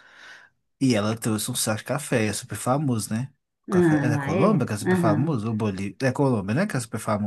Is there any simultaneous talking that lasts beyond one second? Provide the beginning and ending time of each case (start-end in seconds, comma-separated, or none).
3.7-5.3